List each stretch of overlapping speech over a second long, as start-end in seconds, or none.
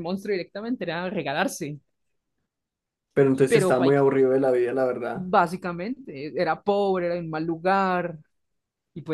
none